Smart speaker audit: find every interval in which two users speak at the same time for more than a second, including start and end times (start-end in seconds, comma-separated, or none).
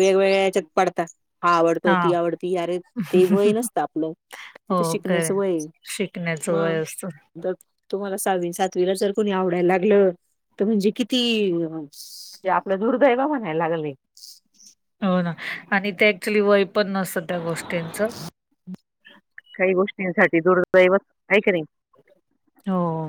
none